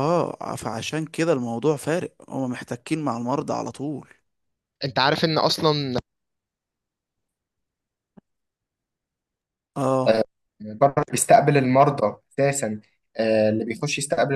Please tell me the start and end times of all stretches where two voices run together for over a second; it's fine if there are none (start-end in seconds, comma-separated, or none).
none